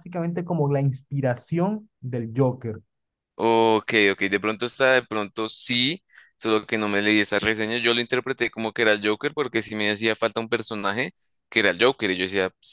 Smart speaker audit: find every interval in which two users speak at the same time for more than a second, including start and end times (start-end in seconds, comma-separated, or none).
none